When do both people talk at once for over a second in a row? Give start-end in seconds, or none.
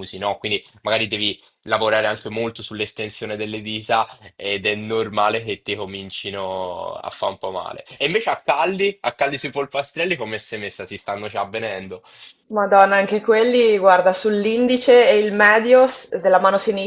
none